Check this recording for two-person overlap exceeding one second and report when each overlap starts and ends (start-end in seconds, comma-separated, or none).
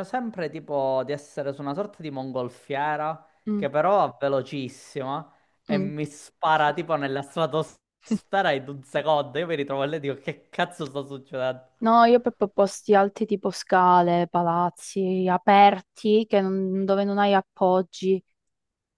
none